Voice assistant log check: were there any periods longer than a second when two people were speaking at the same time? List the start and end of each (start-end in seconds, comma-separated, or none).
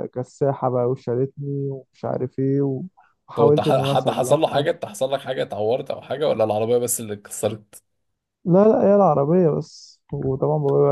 3.3-4.7